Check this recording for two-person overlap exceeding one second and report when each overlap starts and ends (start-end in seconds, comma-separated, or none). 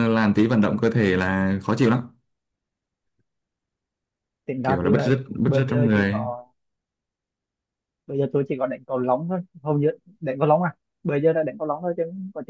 4.6-6.3